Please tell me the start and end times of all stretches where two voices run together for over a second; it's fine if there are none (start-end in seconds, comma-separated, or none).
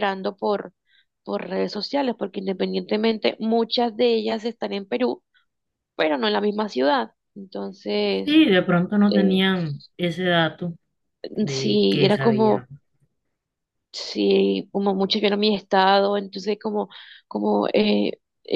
11.5-12.7